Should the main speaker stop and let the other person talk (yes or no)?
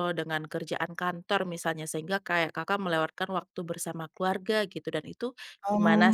yes